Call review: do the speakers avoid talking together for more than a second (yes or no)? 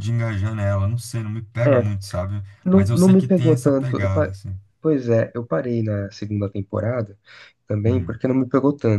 no